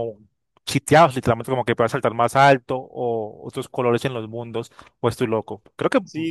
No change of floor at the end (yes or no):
no